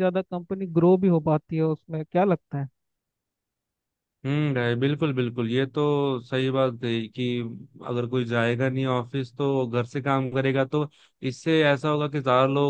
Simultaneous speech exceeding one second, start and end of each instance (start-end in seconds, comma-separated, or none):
none